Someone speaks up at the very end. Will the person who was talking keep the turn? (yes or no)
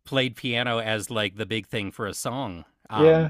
no